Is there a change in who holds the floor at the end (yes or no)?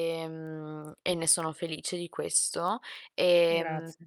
no